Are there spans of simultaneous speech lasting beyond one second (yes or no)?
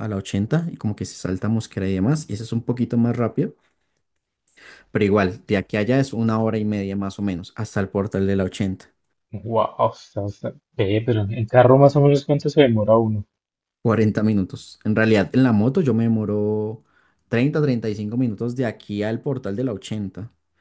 no